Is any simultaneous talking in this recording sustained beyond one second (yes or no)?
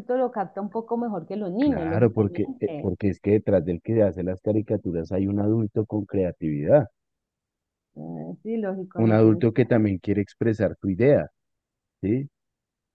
yes